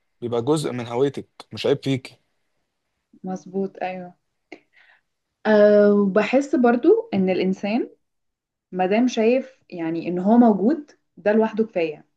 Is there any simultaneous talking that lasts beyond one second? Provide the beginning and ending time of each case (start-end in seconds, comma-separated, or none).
none